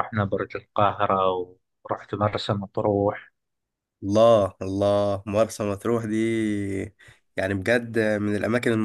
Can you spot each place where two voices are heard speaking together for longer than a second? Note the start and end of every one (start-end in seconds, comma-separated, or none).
none